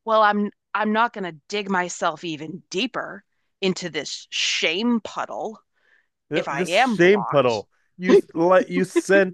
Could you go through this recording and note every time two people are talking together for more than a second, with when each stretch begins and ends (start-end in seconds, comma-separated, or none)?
6.3-7.6